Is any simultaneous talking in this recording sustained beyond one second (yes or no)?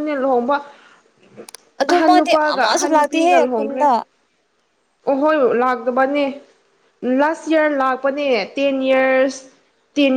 yes